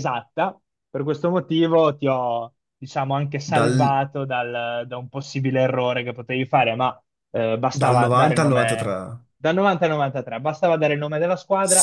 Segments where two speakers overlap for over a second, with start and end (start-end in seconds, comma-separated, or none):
7.7-8.9